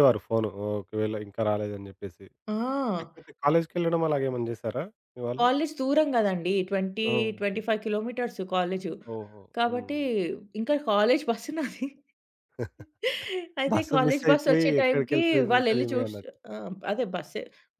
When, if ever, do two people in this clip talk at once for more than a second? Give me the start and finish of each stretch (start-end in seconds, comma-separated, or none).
13.7-16.1